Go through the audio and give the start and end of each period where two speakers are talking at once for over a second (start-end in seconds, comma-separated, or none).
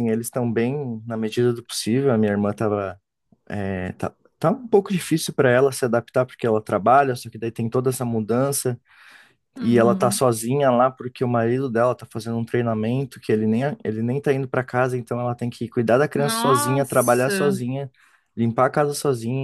16.1-17.6